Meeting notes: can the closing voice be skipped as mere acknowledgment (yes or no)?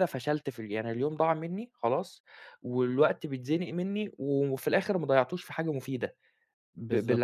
no